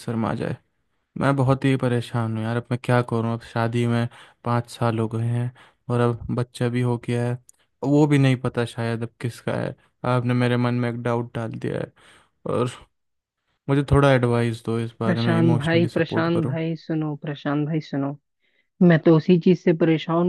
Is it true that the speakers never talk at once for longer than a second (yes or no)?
no